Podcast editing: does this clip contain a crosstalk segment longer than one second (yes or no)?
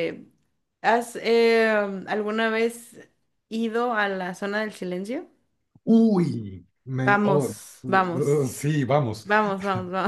yes